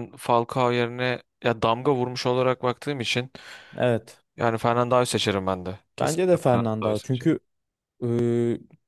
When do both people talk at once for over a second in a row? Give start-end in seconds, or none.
6.0-7.3